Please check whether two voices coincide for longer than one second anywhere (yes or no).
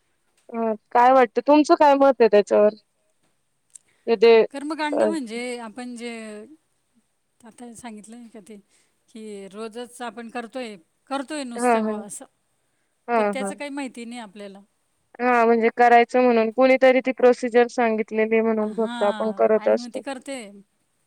yes